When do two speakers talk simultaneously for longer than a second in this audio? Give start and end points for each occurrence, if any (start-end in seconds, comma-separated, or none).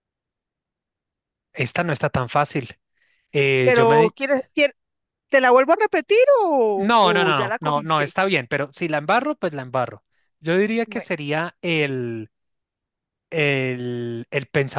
6.8-8.1